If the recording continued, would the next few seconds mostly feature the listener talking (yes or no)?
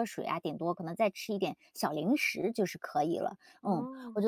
no